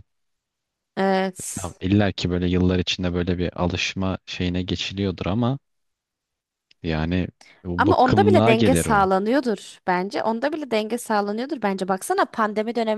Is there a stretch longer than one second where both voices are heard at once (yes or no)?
yes